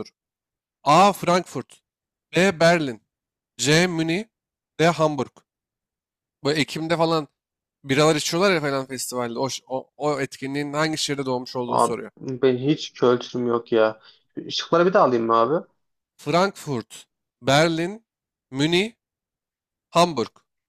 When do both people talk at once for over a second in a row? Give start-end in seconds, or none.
none